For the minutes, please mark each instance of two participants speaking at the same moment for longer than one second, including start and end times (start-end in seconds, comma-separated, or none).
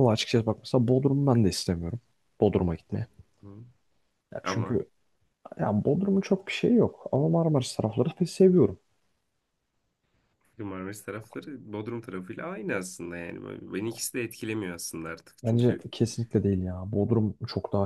none